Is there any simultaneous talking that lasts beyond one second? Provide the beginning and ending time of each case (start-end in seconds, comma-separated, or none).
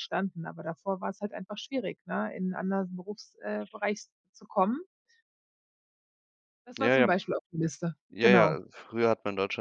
none